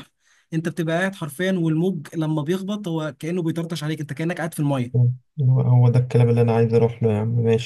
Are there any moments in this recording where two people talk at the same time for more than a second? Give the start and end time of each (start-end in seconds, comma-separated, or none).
none